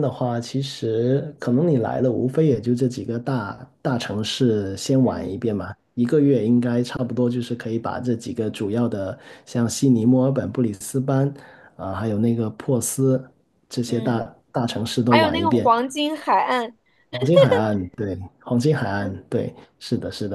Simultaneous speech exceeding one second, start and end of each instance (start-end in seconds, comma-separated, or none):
none